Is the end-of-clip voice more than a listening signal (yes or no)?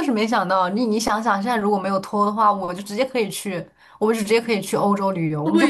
yes